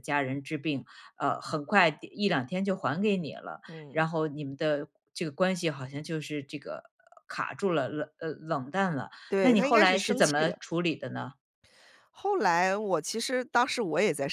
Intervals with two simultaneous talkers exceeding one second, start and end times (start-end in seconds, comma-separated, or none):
9.3-10.6